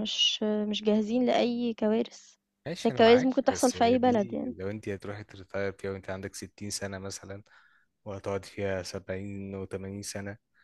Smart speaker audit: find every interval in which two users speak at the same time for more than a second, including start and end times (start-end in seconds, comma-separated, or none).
2.8-4.5